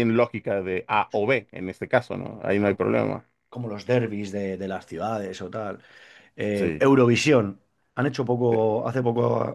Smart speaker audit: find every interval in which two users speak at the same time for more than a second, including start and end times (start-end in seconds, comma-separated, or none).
none